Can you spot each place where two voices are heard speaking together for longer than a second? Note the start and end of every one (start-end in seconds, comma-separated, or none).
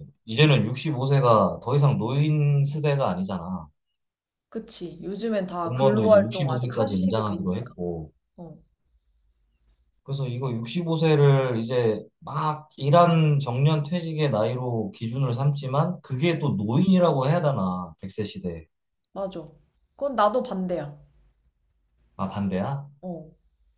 5.6-7.8